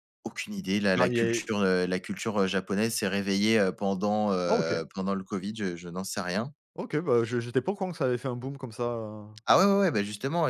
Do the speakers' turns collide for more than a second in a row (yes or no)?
no